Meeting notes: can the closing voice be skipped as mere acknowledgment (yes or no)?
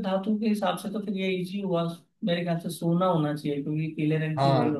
no